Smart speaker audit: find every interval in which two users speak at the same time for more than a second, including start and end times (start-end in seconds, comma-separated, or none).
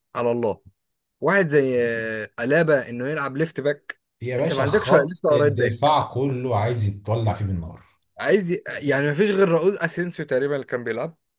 4.4-5.9